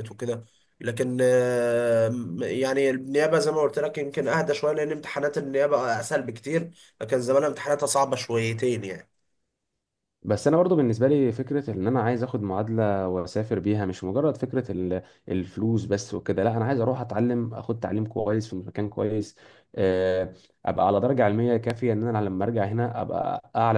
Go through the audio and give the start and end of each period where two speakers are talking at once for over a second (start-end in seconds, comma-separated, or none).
none